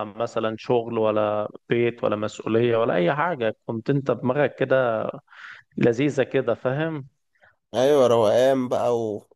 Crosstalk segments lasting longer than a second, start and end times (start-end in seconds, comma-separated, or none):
none